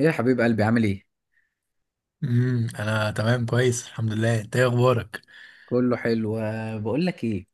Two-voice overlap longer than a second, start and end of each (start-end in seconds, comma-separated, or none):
none